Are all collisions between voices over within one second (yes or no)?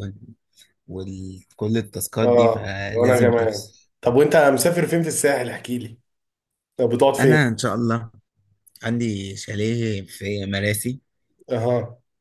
no